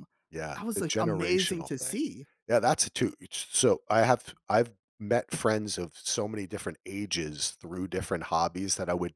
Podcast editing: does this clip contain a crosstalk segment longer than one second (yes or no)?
yes